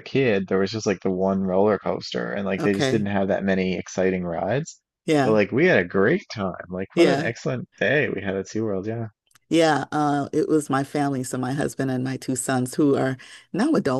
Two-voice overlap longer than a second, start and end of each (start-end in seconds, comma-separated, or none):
none